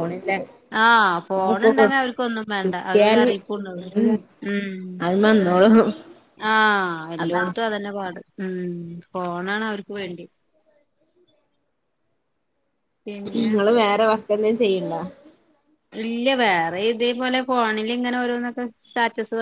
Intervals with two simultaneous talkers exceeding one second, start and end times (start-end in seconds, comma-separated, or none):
none